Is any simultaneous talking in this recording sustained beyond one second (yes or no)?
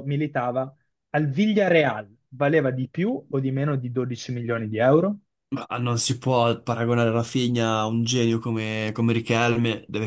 no